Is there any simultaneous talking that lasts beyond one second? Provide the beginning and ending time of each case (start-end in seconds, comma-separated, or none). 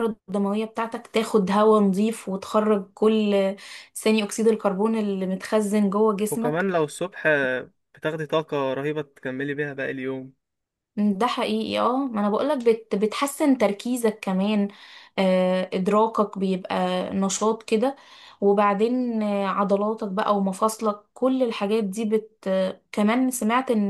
none